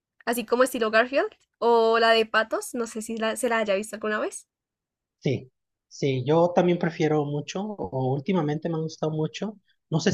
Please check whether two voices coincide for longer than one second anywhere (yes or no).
no